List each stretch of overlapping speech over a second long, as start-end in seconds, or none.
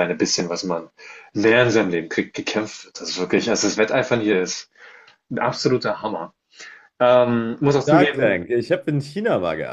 none